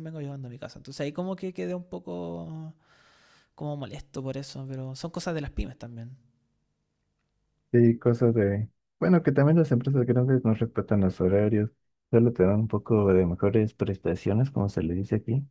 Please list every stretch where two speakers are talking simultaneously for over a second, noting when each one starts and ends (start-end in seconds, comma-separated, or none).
none